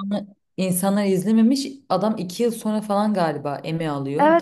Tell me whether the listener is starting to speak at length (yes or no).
yes